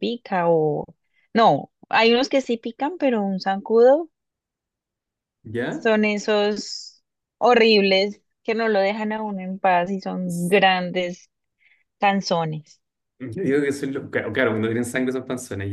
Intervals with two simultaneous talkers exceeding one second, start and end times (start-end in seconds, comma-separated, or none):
none